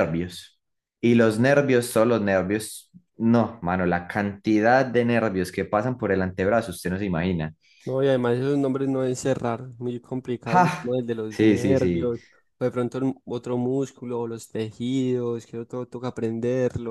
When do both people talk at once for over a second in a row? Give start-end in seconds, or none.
10.4-12.1